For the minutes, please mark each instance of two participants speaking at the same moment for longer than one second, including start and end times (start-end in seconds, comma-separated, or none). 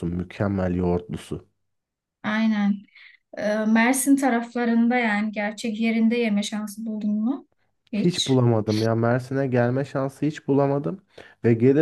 none